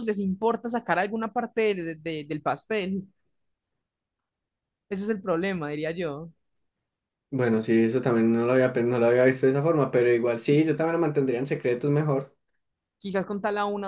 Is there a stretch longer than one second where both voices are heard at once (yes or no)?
no